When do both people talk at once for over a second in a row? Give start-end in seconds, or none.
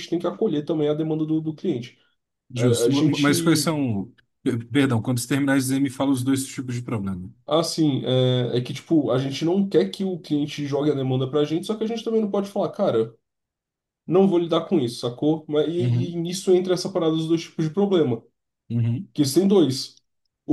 2.5-3.8